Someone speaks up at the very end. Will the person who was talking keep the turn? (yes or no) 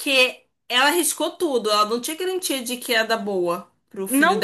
no